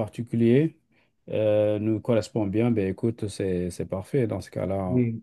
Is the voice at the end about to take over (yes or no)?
yes